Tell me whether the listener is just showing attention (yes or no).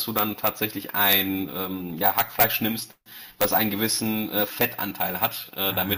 yes